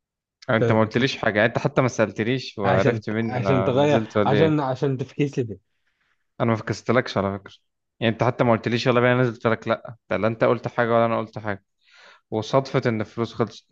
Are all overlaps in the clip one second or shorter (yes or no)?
no